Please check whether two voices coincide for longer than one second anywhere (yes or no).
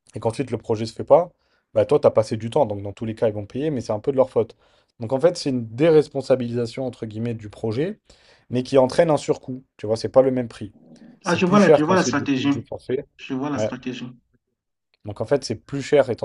yes